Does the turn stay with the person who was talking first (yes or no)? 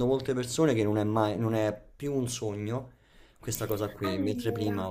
yes